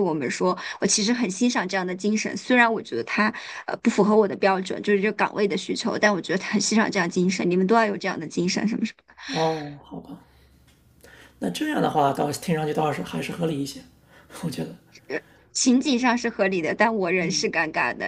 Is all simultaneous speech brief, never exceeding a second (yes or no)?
yes